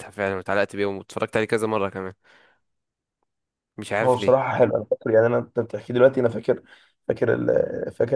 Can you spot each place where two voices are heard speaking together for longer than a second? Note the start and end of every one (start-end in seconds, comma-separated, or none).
none